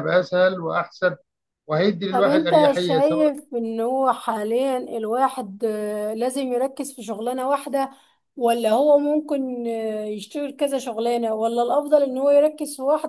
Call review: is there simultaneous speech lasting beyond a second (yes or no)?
yes